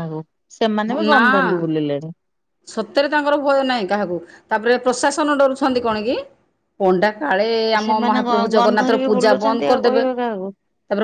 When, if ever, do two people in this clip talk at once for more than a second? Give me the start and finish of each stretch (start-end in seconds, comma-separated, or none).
7.8-10.5